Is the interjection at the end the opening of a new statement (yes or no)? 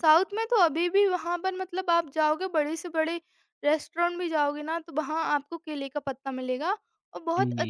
no